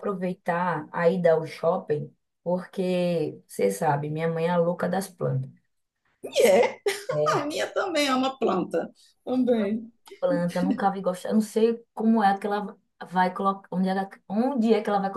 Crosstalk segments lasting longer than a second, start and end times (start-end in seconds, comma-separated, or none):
none